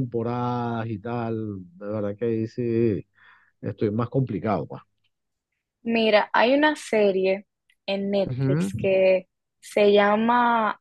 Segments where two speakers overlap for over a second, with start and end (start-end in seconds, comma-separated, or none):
none